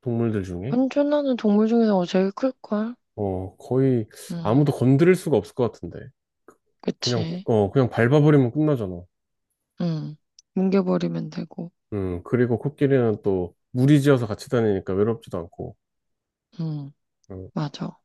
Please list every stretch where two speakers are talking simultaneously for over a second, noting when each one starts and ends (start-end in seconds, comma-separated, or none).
none